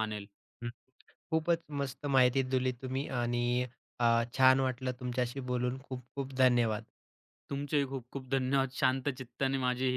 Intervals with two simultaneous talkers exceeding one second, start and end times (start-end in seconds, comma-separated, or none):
none